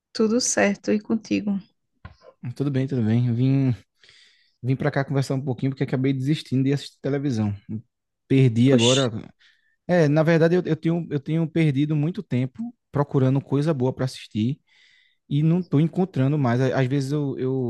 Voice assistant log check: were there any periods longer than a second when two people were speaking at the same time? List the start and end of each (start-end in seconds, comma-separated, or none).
none